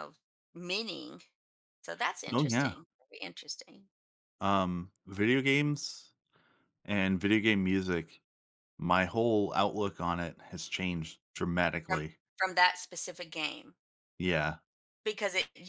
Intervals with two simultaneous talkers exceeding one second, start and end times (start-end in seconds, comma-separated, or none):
none